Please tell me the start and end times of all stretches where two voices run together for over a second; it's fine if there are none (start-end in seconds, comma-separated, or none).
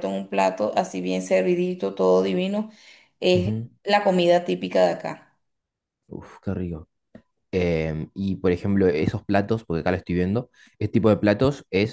none